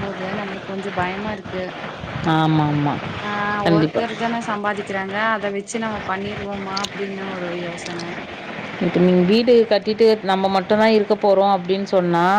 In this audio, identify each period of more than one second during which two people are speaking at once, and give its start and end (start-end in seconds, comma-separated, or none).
none